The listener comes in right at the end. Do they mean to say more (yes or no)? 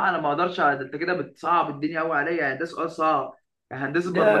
no